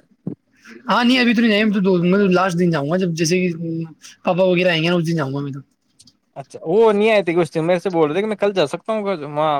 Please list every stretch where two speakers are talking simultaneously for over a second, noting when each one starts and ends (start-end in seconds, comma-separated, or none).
none